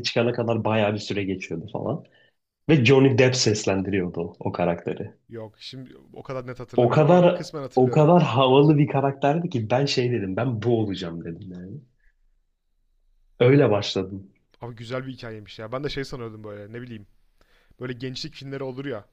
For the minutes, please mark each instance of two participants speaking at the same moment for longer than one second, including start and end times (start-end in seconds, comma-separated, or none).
6.8-8.1